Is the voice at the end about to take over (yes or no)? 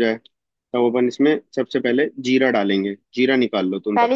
yes